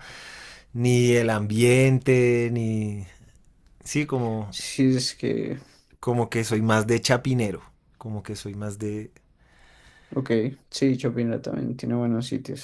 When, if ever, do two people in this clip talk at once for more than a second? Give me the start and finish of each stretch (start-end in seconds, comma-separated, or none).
none